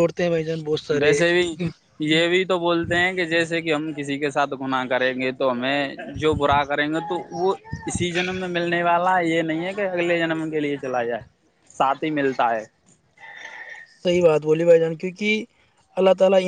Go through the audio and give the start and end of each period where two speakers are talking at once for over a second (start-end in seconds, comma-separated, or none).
none